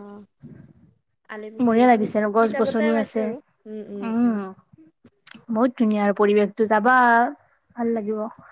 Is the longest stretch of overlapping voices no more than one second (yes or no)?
no